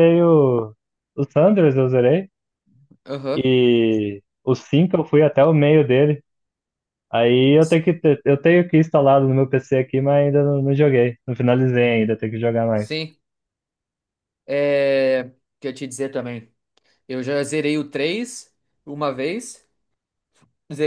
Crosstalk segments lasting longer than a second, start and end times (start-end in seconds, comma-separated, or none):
none